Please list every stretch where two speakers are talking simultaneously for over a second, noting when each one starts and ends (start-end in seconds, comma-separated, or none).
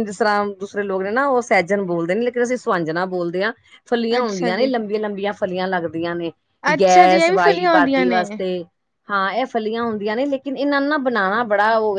6.8-8.3